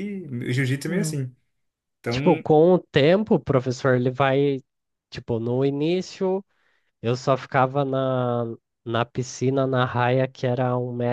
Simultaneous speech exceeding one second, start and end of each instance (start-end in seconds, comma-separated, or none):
none